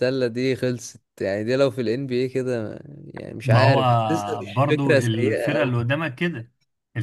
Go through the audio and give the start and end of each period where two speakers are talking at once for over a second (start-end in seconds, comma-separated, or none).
3.4-5.8